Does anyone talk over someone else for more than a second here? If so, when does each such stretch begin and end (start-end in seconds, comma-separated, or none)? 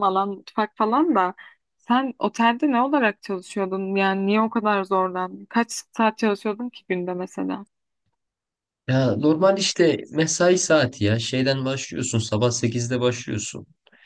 none